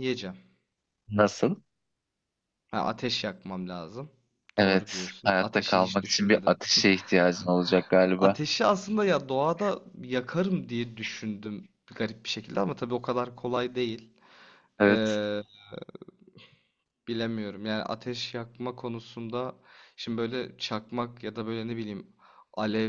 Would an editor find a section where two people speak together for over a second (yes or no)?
yes